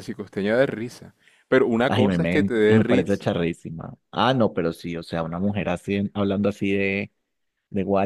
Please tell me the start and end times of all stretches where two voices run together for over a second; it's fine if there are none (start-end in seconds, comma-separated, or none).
1.9-3.2